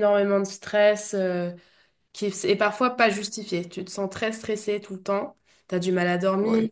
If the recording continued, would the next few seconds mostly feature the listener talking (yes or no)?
no